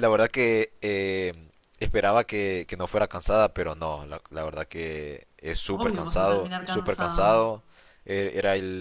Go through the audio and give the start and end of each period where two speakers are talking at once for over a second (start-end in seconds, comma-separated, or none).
5.8-7.5